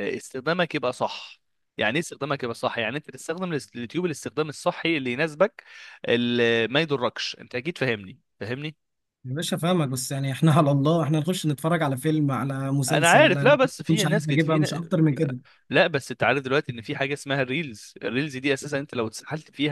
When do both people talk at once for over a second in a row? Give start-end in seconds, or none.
12.9-14.9